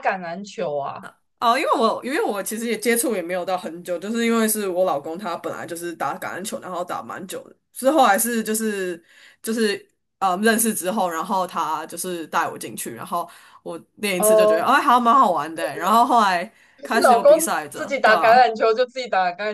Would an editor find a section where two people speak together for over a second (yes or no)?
yes